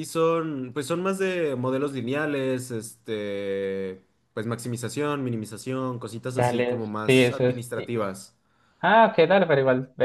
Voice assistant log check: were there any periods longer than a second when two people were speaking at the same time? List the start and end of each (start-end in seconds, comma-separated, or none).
6.3-8.0